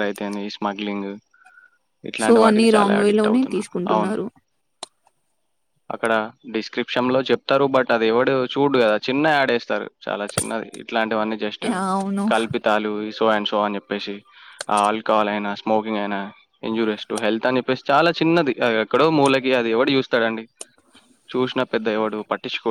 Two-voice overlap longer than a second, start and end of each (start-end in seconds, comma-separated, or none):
2.2-4.1